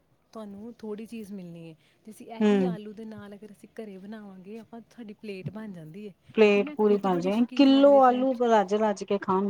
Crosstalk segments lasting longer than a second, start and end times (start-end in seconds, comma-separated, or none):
6.3-8.4